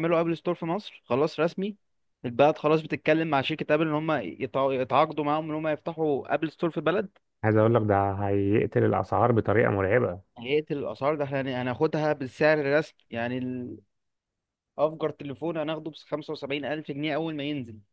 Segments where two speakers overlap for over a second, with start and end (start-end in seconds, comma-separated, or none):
none